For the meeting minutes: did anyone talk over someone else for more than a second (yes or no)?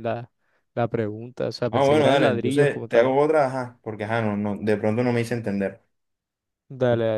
yes